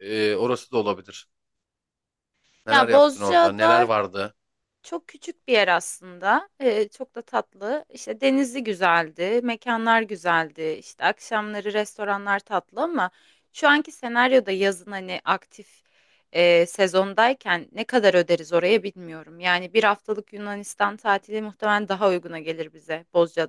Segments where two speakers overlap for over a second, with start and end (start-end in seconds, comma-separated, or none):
2.7-3.9